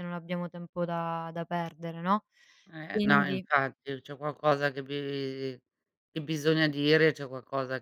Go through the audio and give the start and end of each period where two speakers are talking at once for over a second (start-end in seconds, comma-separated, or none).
none